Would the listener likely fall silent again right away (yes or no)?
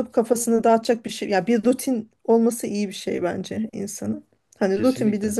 yes